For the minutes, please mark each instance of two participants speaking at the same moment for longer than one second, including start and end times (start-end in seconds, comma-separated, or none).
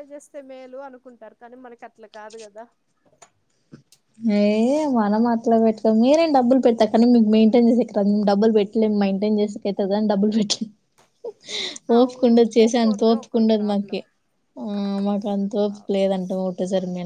12.0-14.0